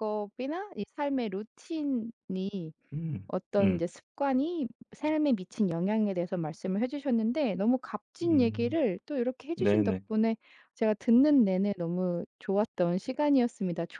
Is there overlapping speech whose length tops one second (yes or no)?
no